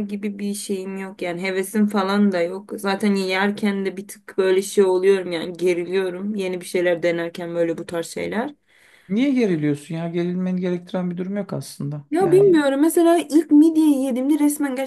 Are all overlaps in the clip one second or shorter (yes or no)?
yes